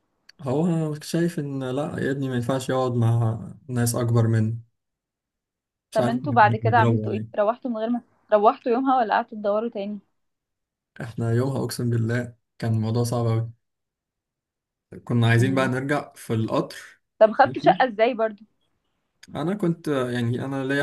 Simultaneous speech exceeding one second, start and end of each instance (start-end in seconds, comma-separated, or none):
5.9-7.5